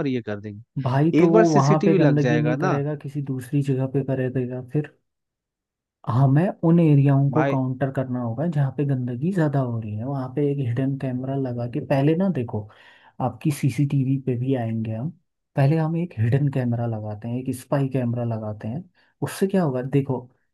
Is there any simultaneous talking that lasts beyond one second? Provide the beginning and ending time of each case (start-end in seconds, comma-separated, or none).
0.8-2.8